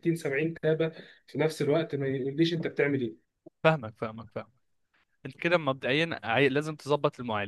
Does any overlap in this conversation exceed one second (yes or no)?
no